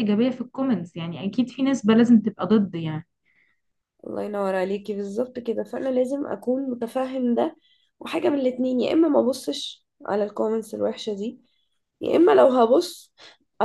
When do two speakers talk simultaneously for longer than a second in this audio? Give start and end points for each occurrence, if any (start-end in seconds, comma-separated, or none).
none